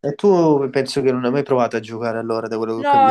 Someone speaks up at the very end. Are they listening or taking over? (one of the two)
taking over